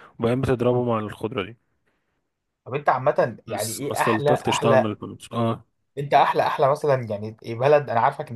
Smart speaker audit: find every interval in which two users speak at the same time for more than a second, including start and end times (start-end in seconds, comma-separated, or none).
3.5-4.9